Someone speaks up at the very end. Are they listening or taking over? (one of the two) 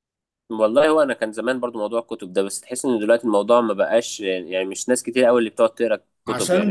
taking over